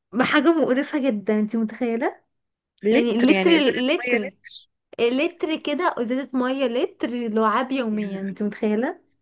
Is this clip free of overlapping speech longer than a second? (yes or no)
no